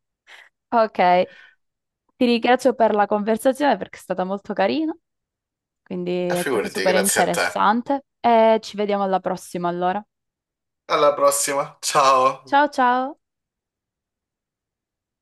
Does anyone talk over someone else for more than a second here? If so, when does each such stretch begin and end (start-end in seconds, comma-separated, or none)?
6.3-7.7